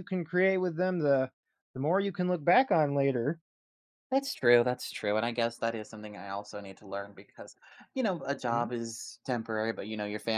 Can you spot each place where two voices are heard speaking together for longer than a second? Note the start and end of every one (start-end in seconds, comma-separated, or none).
none